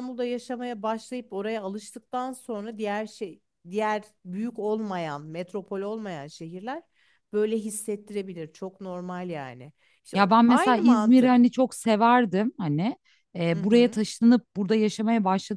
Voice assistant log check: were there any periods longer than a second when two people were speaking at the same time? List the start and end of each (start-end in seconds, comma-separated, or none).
10.2-11.4